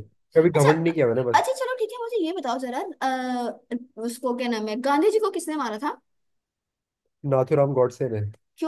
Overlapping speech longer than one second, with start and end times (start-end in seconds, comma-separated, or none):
none